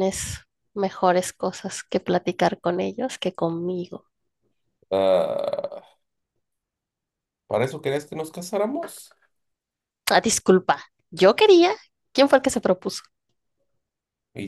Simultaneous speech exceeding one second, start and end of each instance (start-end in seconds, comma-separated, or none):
none